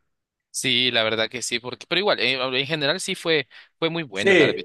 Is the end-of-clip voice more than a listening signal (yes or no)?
yes